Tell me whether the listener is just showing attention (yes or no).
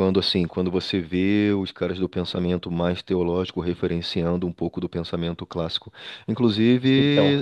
yes